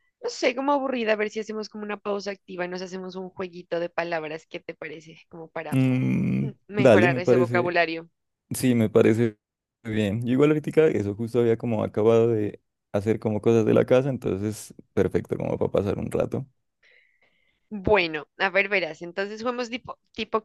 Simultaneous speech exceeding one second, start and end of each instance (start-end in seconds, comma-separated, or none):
6.4-7.8